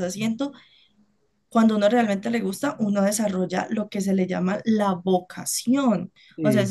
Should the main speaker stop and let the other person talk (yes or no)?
no